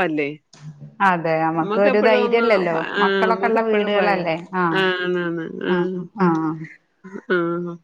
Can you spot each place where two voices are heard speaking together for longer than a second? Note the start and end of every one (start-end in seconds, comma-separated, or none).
1.6-4.2